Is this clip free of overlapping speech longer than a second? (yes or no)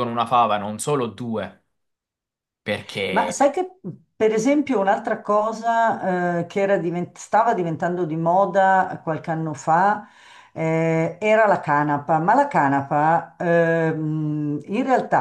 yes